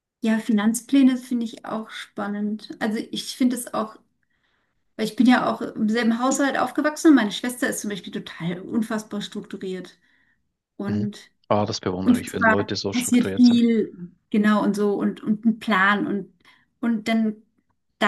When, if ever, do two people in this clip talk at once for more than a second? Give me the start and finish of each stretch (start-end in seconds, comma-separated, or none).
12.0-13.6